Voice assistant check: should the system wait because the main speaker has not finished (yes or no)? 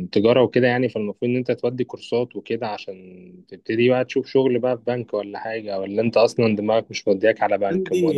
no